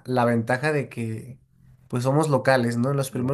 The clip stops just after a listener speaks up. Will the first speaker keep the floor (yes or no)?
yes